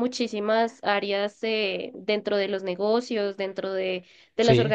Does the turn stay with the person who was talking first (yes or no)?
yes